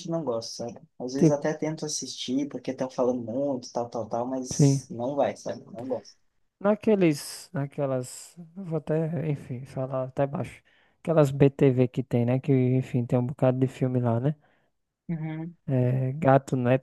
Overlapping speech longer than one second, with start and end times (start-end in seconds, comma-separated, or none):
none